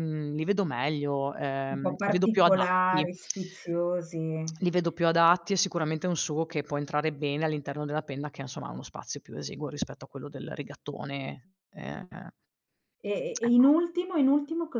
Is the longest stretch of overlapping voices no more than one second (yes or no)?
no